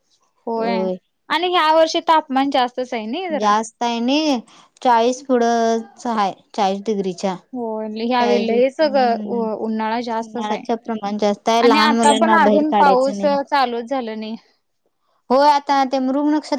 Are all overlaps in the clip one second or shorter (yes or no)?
no